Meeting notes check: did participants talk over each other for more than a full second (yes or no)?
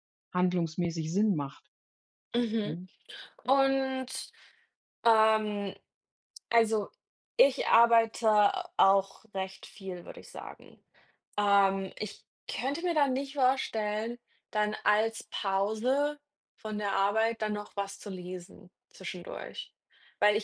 no